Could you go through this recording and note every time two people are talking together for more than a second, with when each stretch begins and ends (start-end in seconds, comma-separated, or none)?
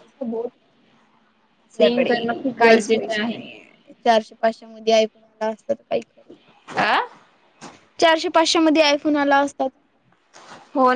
1.7-3.4